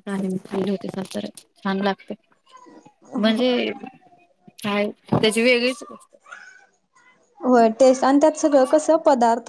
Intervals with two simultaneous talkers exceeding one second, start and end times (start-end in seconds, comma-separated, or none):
none